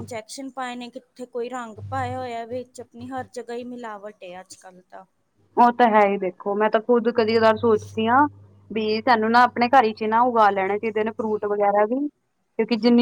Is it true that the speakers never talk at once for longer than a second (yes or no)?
yes